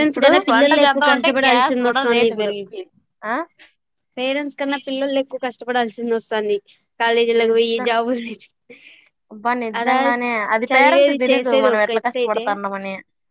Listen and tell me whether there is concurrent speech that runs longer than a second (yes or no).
yes